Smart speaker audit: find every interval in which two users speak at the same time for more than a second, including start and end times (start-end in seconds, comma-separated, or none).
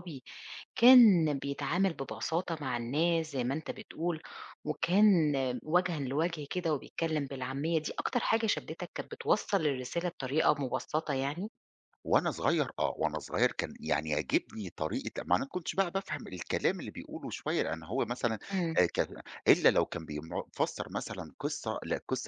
none